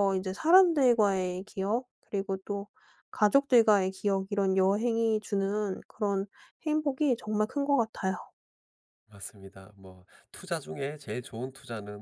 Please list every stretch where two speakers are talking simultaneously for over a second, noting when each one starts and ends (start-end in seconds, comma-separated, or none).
none